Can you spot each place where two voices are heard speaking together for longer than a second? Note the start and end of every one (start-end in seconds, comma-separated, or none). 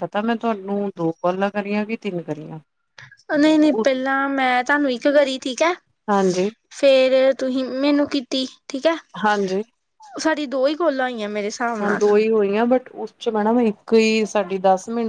none